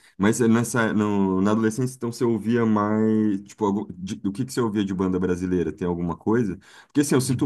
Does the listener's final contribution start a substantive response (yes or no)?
no